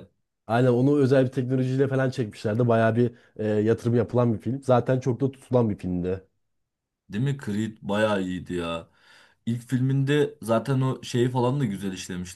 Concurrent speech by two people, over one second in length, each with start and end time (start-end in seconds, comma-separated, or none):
none